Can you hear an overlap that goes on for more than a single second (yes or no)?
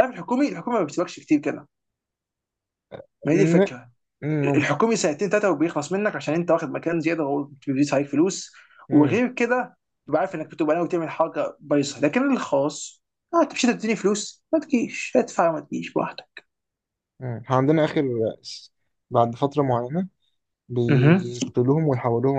no